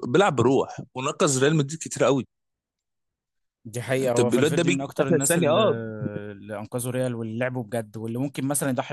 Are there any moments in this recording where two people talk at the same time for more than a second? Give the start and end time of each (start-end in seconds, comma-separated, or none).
4.0-5.6